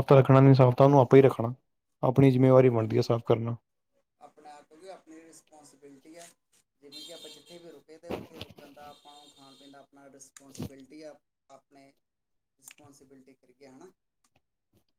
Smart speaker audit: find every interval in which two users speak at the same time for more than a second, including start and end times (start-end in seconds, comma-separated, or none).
none